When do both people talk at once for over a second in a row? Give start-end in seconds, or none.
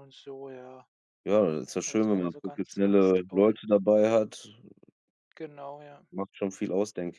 1.9-3.6